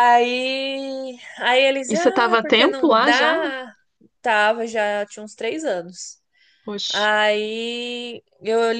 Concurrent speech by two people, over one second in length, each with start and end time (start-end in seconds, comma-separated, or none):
1.9-3.4